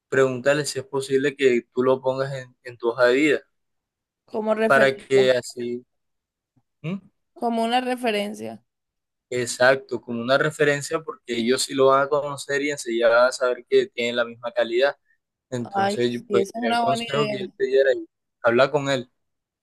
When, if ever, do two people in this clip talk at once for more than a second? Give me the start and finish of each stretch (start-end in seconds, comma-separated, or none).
15.7-17.4